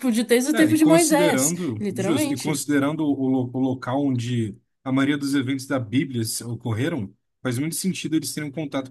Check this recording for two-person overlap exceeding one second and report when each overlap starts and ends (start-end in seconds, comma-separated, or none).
0.5-2.6